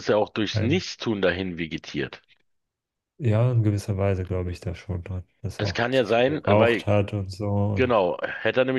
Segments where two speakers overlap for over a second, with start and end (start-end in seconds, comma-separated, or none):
5.6-6.9